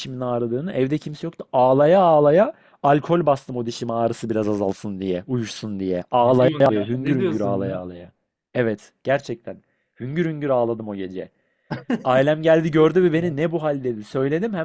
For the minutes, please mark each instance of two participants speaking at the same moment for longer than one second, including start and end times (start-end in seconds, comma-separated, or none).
6.2-7.8